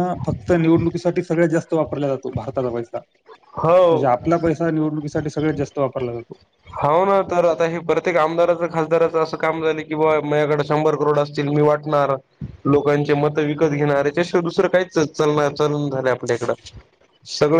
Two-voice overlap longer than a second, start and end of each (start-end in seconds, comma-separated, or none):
none